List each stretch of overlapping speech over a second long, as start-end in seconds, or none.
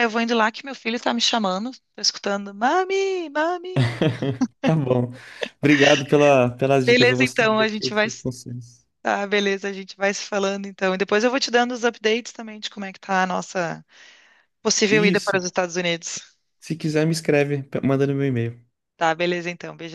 6.8-8.2